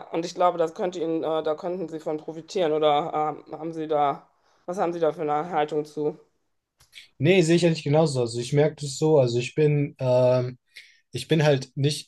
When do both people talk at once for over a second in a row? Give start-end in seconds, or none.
none